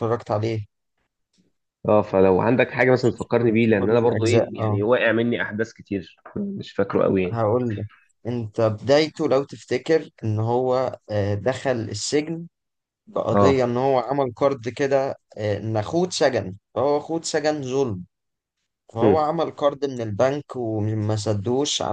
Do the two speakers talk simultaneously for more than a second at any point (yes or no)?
yes